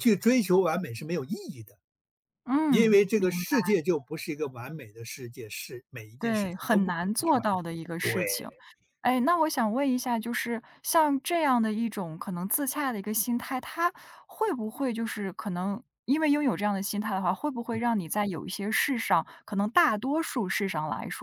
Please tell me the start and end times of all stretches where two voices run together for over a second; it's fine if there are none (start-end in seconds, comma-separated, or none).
6.2-8.2